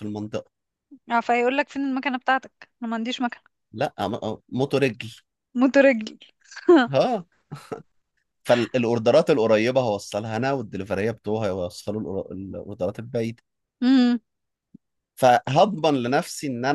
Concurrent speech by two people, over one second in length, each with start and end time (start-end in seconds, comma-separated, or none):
none